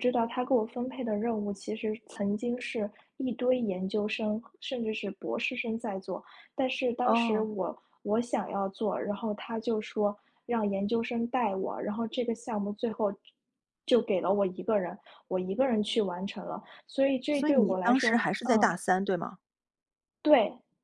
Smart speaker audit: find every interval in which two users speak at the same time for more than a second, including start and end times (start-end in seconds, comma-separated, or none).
17.3-18.7